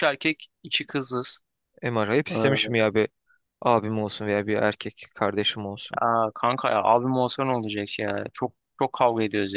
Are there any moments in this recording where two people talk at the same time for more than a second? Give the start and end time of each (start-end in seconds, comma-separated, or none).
none